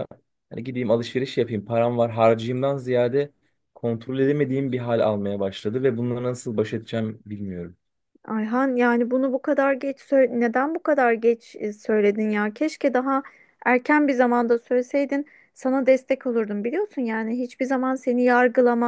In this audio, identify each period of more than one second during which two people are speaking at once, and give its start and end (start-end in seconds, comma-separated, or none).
none